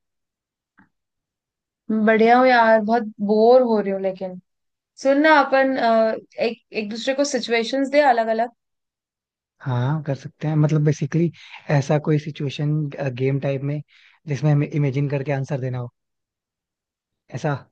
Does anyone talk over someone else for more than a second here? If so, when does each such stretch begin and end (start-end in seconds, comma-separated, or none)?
none